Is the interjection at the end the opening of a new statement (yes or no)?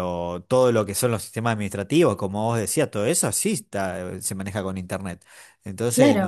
yes